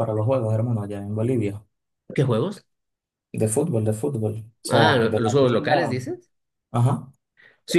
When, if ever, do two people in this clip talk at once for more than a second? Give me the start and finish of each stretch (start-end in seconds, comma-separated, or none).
4.7-6.0